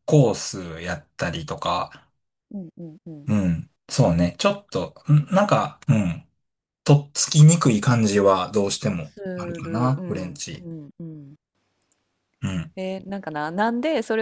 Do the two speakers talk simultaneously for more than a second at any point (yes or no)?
yes